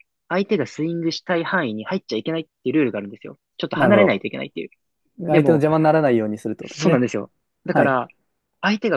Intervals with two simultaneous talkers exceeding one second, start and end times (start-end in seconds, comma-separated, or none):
none